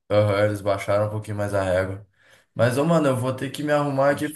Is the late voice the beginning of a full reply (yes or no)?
no